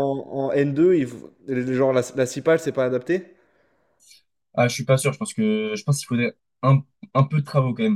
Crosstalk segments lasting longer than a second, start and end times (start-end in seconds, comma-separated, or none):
none